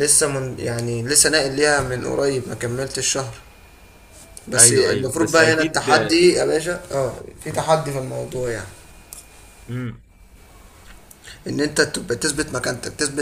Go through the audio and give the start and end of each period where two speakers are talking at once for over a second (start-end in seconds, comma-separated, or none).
4.6-5.9